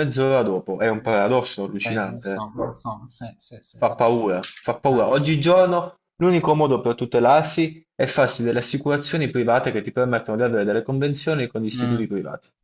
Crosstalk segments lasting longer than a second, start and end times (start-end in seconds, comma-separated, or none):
1.0-2.5